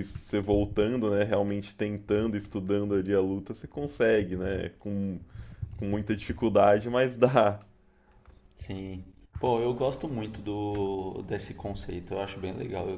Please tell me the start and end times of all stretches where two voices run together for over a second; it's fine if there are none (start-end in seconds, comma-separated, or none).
none